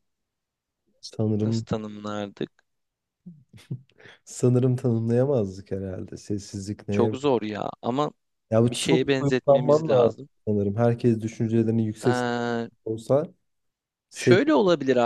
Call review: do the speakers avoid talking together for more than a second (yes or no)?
no